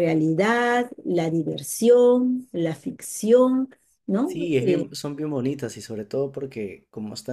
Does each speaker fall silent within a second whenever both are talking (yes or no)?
yes